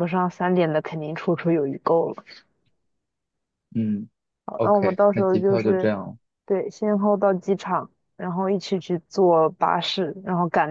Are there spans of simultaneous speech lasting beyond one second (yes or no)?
yes